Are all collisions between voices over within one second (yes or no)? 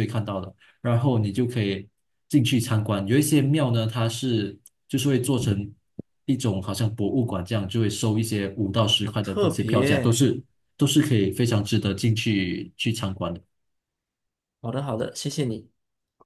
no